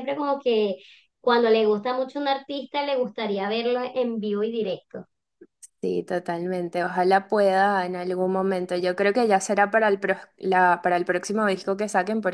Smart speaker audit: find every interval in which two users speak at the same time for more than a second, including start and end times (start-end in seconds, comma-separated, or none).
none